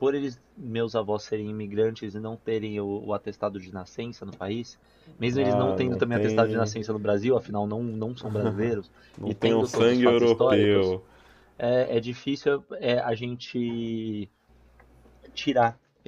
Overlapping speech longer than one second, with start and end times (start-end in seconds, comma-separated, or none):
5.4-6.7, 9.2-11.0